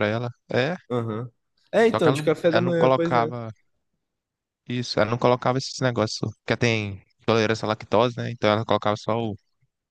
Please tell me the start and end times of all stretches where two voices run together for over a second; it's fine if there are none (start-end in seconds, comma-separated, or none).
1.8-3.3